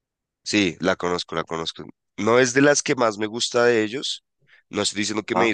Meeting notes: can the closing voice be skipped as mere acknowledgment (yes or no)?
yes